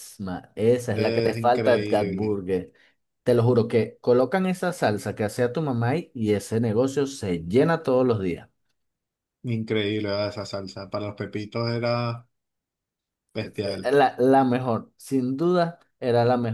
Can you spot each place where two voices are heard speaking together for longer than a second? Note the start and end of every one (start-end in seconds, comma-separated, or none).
0.9-2.4